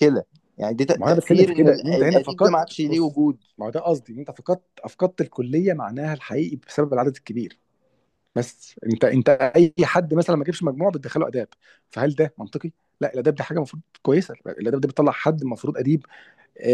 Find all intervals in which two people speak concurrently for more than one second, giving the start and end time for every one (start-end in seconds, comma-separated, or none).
0.9-3.2